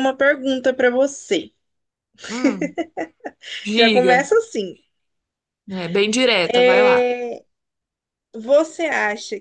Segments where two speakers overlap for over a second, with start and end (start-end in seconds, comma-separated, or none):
none